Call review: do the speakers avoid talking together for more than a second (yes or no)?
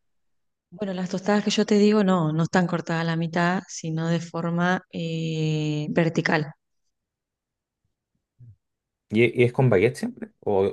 yes